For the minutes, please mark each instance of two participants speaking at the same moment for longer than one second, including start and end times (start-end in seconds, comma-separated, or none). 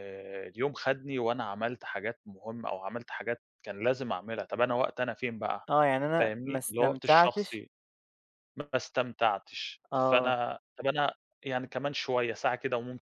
6.2-7.6